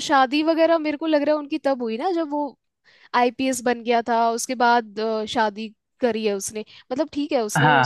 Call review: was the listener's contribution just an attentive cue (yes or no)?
yes